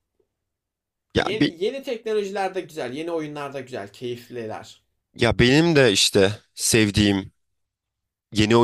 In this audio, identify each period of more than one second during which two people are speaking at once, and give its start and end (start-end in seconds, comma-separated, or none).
none